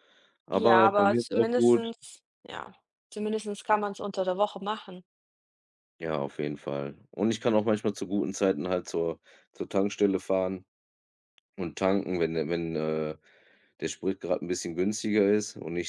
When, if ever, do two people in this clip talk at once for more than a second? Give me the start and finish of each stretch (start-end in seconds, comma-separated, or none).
0.5-1.9